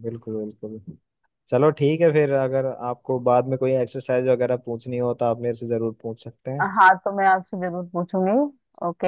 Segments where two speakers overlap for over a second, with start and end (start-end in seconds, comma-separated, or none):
none